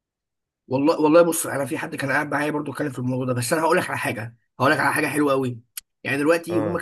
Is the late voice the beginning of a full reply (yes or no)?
no